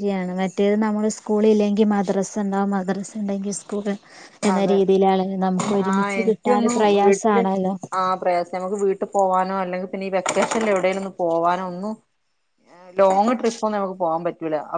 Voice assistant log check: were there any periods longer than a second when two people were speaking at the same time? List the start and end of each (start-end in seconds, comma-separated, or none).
5.9-7.4